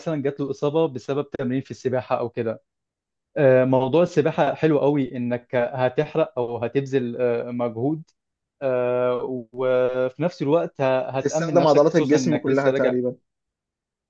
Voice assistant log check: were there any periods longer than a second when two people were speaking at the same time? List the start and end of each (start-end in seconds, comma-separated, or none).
11.1-12.9